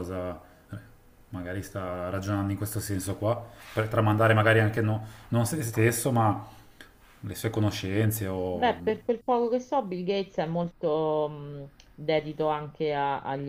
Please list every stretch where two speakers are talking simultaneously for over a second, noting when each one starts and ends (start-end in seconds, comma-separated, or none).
none